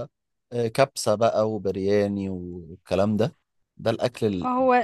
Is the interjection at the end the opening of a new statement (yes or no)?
no